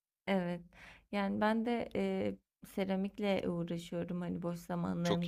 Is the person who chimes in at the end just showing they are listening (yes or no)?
yes